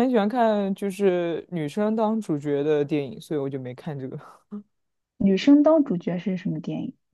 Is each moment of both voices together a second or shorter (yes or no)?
yes